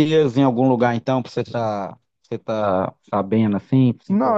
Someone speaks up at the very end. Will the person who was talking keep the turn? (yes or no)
no